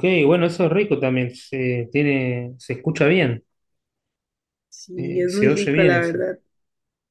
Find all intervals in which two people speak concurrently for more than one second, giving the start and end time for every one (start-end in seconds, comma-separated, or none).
5.0-6.2